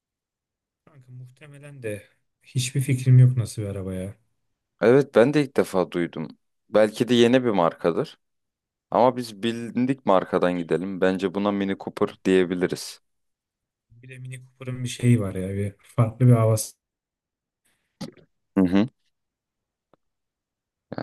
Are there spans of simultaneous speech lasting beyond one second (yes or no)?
no